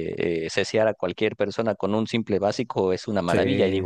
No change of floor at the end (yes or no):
yes